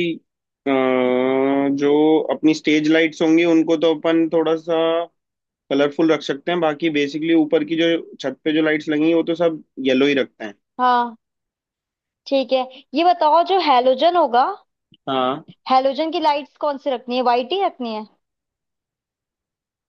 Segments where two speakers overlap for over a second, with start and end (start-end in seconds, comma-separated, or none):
none